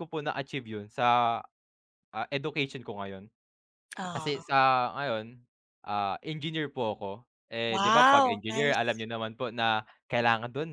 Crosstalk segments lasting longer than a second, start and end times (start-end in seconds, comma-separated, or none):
7.7-9.0